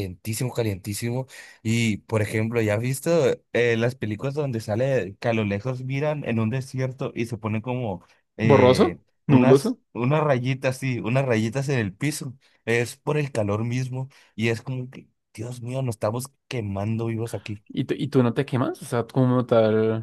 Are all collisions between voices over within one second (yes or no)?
no